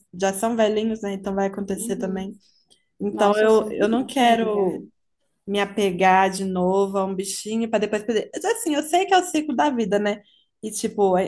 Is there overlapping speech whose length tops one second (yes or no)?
yes